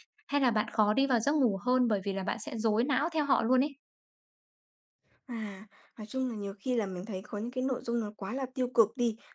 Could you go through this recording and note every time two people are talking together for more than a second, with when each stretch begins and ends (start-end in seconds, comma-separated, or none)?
none